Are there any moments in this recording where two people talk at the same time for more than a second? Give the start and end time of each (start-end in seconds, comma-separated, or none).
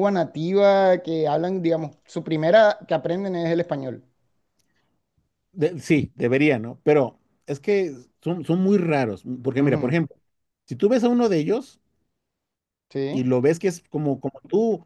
none